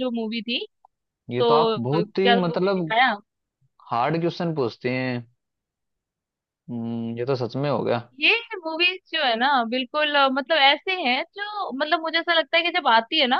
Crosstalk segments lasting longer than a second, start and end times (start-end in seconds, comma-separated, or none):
1.4-2.9